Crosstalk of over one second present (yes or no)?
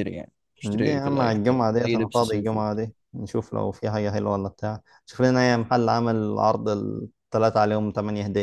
yes